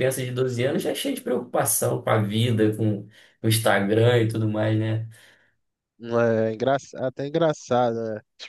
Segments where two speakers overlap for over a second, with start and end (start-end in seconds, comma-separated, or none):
none